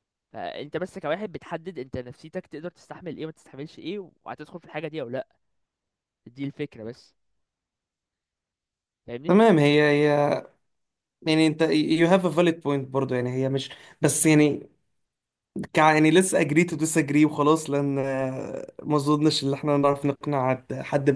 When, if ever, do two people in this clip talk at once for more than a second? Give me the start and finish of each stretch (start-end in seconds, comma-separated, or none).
none